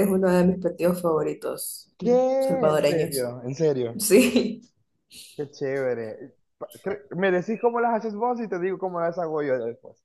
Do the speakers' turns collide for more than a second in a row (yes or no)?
yes